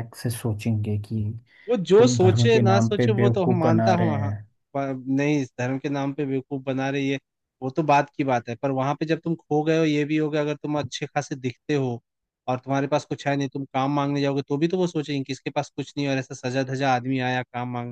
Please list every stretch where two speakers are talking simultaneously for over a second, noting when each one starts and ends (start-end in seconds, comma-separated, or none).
2.0-4.3